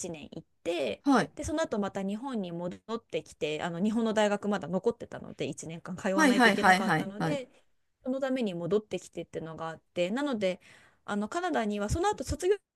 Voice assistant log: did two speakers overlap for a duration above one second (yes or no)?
yes